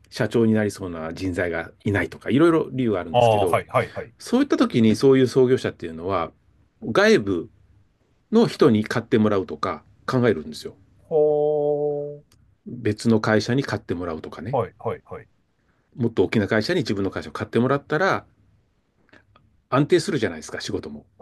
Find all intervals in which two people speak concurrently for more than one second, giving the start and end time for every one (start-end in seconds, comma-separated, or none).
none